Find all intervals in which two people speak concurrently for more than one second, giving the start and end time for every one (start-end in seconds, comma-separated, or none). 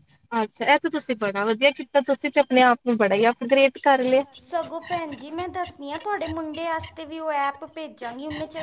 none